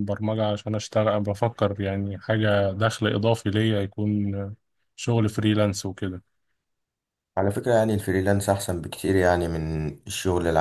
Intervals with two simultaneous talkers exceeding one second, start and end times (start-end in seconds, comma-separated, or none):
none